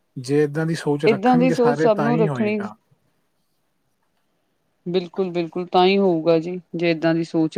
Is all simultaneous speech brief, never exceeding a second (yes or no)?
no